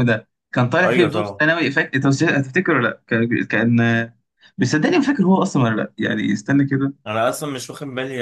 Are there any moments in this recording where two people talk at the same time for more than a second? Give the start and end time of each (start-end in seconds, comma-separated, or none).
none